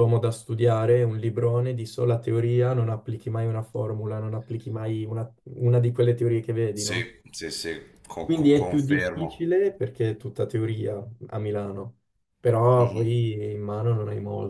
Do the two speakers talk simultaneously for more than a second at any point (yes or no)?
yes